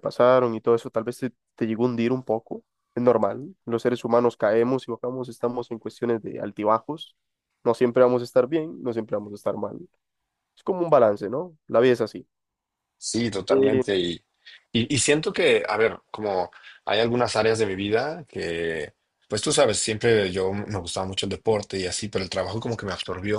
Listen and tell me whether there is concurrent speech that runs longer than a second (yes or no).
no